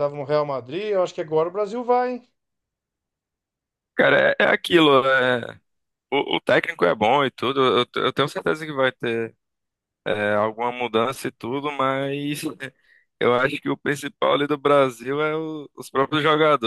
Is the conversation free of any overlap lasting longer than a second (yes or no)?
yes